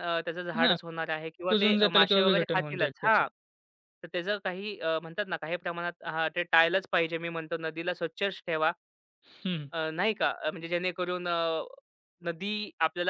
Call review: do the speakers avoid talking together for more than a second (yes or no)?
no